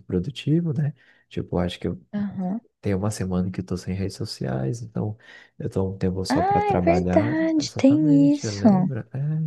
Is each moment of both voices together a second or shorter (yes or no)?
no